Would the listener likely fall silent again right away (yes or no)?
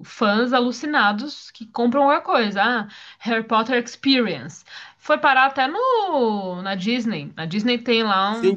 no